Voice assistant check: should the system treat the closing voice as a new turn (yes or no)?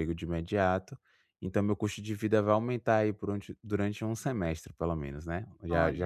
no